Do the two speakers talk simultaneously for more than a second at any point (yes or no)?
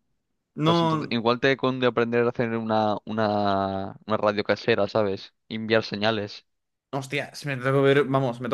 no